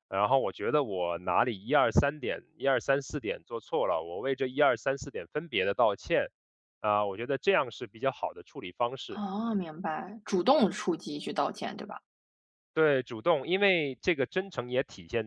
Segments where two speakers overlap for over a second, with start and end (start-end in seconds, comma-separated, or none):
none